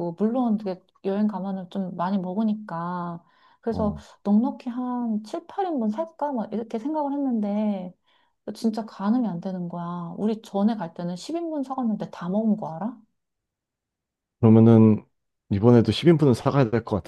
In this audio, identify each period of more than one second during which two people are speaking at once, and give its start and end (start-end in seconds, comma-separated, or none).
none